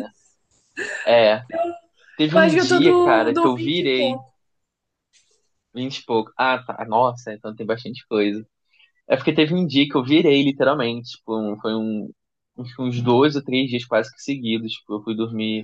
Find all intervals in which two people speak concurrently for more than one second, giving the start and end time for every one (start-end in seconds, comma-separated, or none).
2.3-4.2